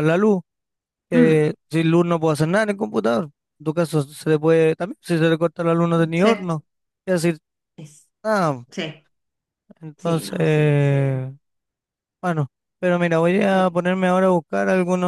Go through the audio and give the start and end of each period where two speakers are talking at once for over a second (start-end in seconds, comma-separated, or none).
9.9-11.2